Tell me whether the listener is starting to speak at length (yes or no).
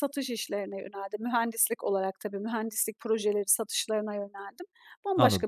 yes